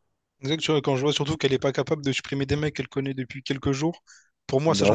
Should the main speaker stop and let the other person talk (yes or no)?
no